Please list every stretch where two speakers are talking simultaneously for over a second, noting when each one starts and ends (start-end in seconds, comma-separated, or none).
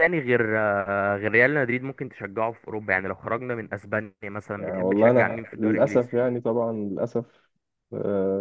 4.6-6.1